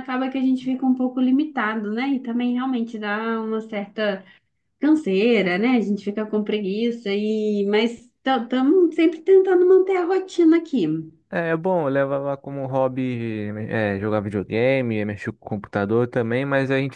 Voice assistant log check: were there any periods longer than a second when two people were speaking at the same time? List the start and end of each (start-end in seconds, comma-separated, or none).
none